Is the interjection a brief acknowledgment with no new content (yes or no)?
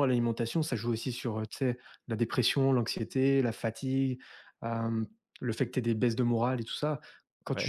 yes